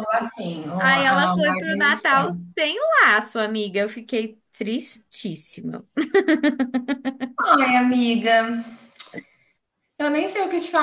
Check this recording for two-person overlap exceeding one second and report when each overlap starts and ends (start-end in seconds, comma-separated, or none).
0.8-2.3